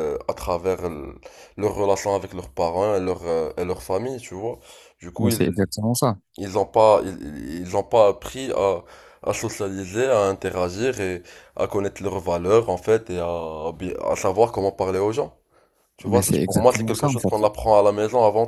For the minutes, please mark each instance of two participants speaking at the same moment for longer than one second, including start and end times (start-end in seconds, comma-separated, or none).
16.1-17.3